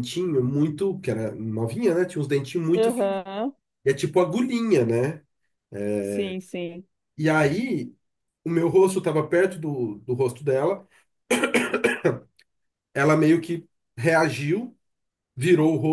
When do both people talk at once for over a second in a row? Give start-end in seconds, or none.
none